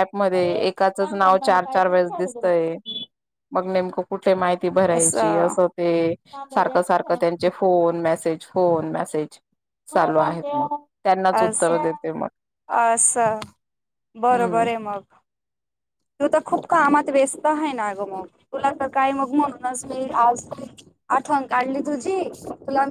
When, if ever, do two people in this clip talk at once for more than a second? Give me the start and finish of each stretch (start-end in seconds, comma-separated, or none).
none